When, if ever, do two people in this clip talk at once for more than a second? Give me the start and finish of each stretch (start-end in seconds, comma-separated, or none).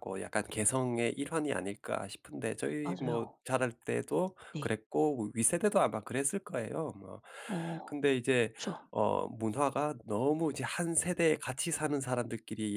none